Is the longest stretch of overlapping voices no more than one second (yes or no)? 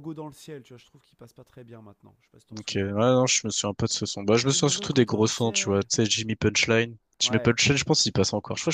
no